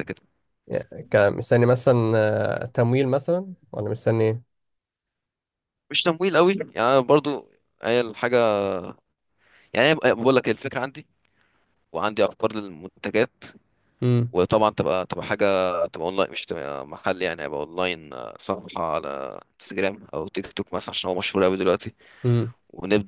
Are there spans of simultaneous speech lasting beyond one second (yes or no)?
no